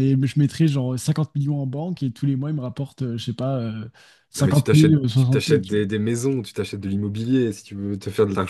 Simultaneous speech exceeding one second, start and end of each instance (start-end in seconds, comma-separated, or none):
4.3-5.8